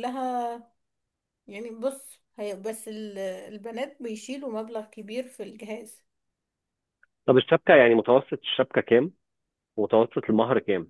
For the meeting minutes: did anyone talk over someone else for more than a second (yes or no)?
no